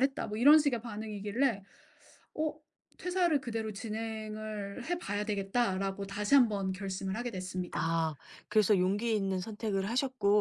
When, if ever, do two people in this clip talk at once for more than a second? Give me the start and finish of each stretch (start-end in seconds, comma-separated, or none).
none